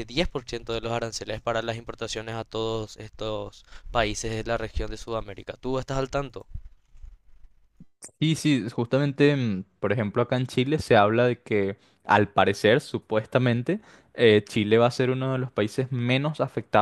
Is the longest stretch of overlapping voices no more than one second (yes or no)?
yes